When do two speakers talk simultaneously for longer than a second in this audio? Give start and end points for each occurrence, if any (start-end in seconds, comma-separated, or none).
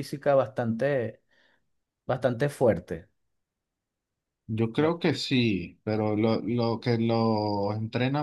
none